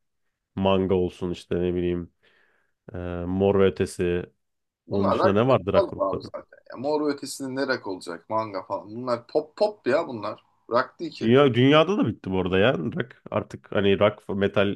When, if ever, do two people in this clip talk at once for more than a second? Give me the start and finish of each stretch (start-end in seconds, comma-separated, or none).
4.9-6.3